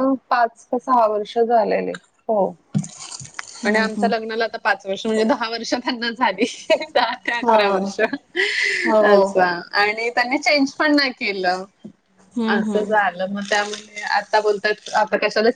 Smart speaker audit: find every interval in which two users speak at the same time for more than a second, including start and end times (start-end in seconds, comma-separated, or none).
none